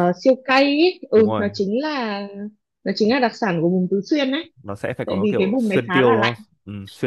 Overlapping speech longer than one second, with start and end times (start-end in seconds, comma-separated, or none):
5.0-6.4